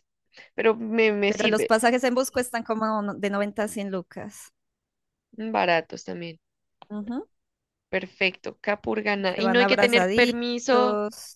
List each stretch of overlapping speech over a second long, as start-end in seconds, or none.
9.2-10.4